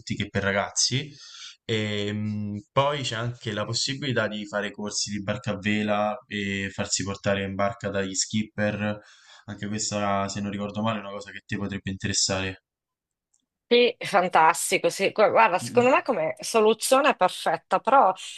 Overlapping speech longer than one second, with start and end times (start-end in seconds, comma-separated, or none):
none